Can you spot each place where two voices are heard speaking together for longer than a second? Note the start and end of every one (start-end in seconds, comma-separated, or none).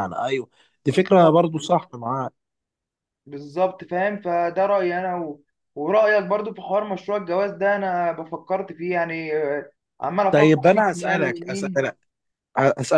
10.3-11.8